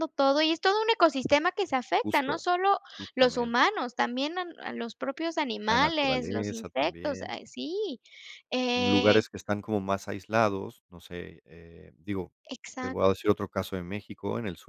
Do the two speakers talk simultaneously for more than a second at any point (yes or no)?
yes